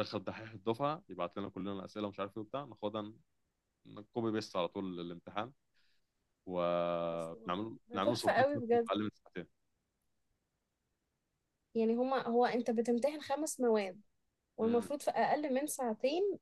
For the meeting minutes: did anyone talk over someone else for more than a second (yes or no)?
yes